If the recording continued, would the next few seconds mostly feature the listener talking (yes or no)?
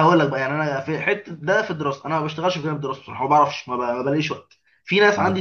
no